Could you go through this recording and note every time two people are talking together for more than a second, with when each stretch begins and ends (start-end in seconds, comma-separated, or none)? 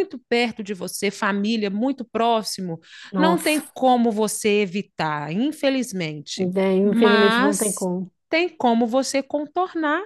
6.4-7.9